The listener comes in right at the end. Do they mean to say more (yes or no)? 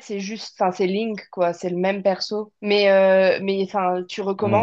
no